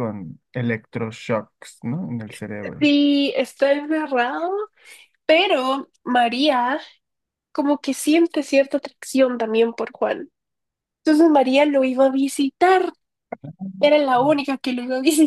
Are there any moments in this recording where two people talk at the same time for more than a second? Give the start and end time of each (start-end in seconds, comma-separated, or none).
none